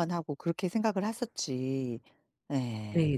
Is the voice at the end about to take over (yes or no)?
yes